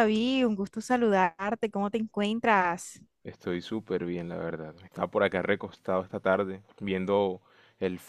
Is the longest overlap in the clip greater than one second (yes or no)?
no